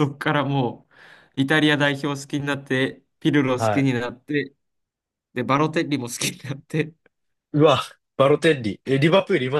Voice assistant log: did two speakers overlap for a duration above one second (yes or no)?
no